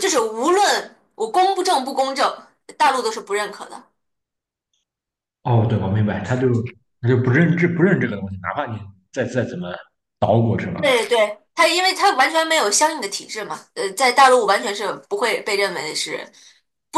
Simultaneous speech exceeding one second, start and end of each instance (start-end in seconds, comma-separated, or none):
none